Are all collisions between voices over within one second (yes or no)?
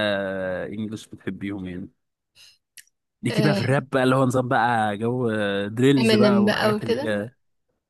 no